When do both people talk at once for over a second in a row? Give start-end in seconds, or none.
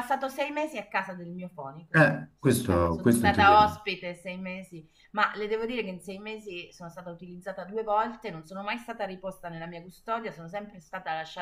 1.9-3.6